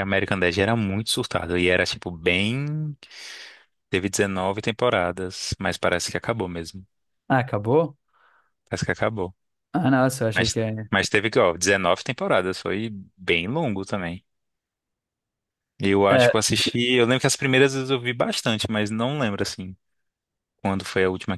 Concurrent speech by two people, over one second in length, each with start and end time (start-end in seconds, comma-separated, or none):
none